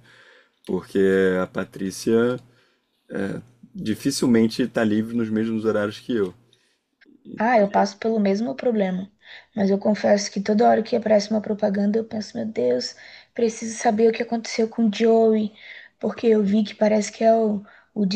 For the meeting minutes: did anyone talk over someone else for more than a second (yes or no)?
no